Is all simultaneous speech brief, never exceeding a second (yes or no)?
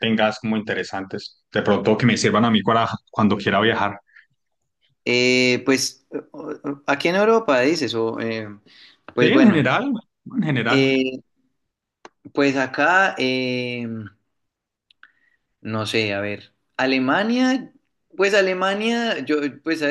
yes